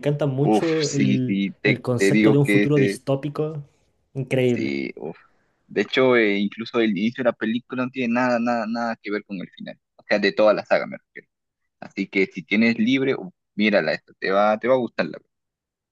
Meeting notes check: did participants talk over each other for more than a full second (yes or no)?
yes